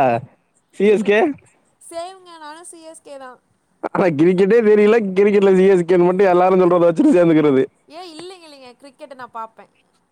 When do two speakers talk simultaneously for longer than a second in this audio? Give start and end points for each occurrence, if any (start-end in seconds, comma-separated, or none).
none